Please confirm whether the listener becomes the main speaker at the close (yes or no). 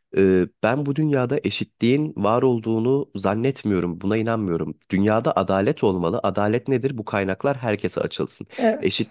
no